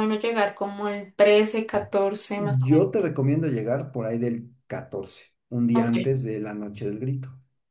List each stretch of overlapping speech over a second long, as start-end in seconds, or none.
none